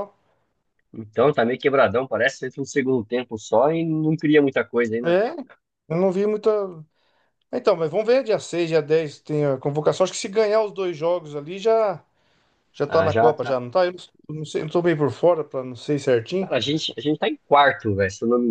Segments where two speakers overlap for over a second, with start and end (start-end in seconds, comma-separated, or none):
none